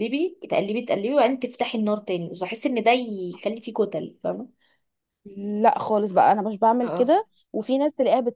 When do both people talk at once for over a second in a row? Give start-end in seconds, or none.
none